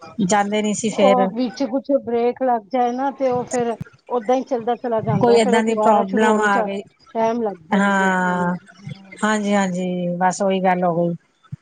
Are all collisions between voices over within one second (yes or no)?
no